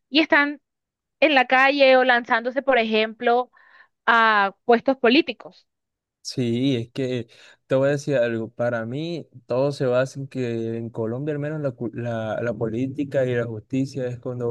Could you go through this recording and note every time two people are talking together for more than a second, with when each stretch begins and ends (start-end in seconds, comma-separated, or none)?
none